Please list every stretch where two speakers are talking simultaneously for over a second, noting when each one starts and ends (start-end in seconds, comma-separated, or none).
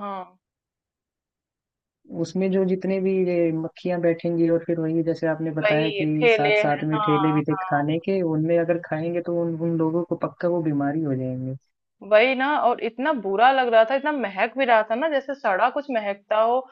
5.6-7.8